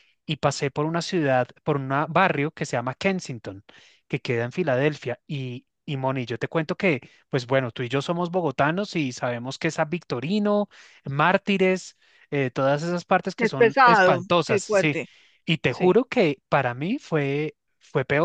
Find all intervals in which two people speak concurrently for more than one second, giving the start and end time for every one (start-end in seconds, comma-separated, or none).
13.4-15.0